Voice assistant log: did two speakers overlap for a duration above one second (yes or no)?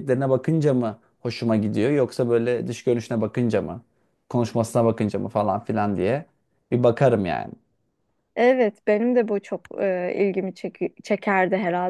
no